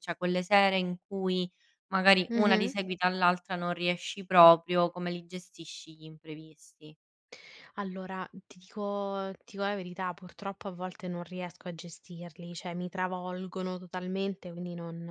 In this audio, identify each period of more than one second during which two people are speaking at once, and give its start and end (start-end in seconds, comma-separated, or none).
none